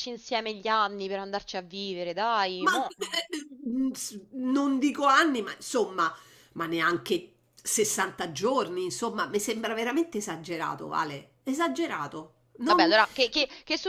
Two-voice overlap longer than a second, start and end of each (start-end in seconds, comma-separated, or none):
none